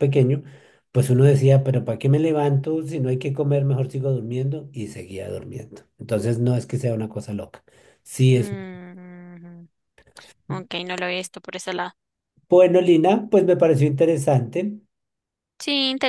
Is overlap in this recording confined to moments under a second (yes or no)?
yes